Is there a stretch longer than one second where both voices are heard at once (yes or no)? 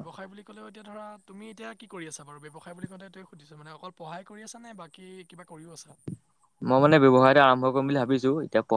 no